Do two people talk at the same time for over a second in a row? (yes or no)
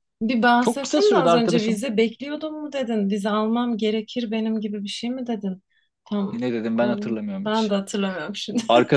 yes